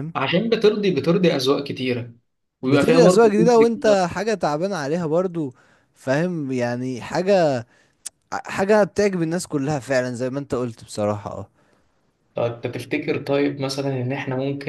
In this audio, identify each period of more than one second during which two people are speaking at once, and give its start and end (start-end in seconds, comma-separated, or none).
2.6-4.0